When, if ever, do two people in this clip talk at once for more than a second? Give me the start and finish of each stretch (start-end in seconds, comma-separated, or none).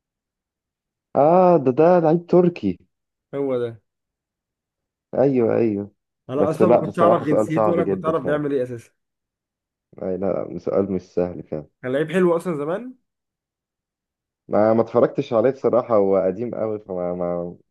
6.4-8.4